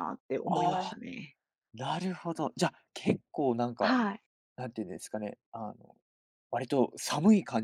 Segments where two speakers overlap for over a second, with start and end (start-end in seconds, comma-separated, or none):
none